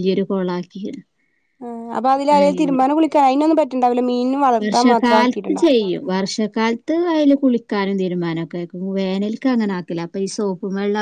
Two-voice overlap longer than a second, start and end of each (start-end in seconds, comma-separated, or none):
none